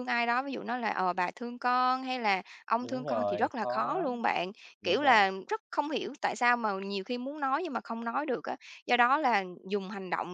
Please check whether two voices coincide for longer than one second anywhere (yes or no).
yes